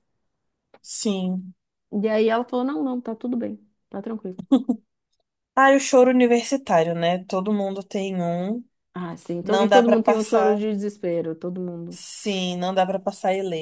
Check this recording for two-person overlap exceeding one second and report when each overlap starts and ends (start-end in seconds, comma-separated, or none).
9.4-10.6